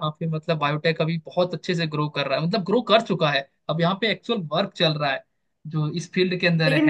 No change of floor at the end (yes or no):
no